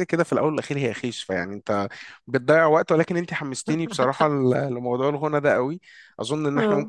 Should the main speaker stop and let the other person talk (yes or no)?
no